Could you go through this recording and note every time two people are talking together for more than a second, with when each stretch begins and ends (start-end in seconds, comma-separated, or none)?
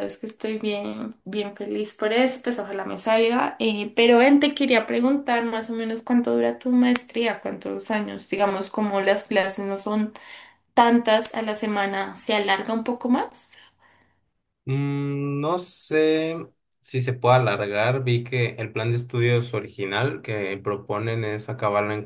none